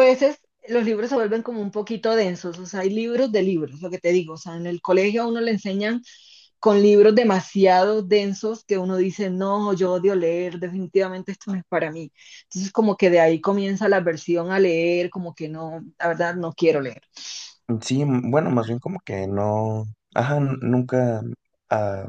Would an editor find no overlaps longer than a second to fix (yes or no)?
yes